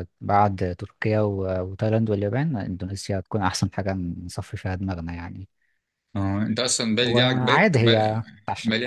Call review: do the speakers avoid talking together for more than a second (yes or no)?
no